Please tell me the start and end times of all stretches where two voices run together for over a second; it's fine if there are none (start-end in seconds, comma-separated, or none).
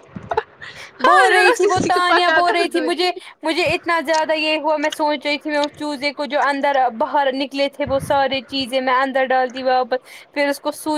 1.1-3.1